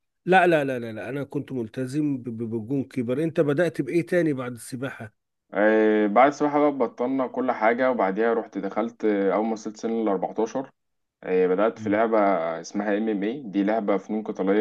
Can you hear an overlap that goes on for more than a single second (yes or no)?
no